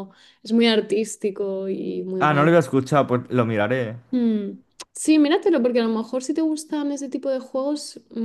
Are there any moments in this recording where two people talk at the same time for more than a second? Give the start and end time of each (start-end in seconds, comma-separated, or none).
none